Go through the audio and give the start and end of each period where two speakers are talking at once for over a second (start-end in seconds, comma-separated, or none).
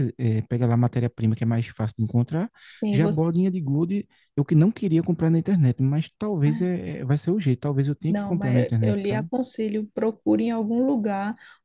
8.1-9.3